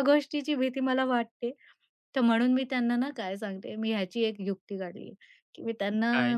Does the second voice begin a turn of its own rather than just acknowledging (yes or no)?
no